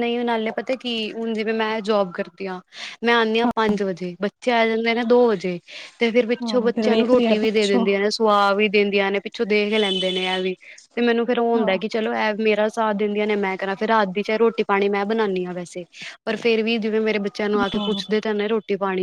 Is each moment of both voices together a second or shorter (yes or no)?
no